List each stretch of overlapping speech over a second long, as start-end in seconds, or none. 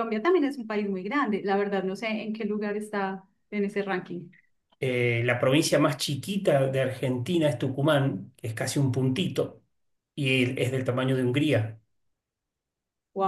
none